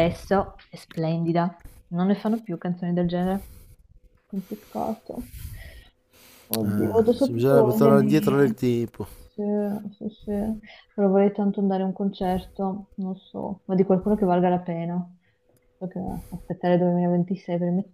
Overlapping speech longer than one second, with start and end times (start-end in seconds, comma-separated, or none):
6.6-8.6